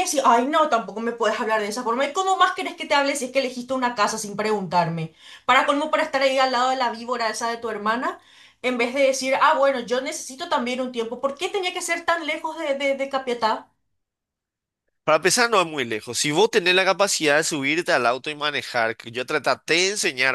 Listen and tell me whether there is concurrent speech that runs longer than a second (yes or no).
no